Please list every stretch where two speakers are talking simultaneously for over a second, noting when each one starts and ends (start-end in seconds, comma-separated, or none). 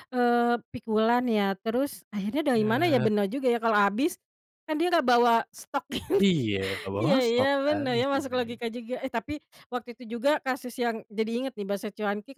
7.0-8.6